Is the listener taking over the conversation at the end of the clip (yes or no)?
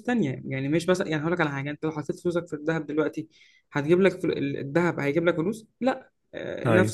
no